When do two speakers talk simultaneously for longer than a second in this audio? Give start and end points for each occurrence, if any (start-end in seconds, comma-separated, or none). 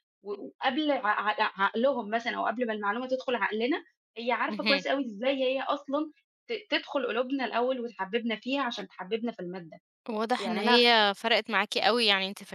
none